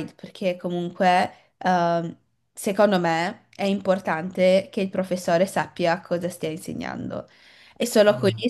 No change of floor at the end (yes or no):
yes